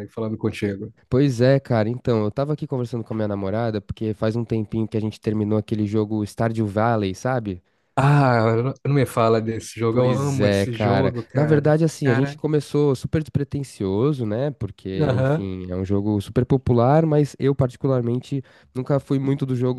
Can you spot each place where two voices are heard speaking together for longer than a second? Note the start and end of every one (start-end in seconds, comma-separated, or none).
9.9-12.4